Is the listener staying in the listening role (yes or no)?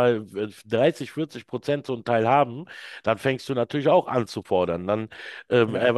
yes